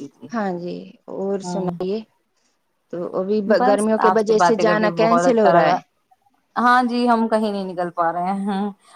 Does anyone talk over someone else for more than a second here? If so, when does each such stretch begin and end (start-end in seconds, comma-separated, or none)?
3.6-5.8